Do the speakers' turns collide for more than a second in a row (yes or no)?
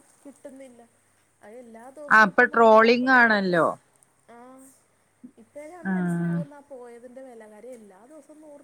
yes